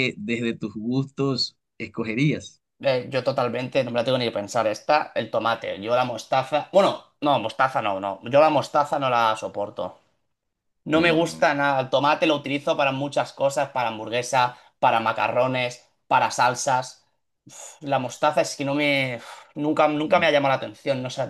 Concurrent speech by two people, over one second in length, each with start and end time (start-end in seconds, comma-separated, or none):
none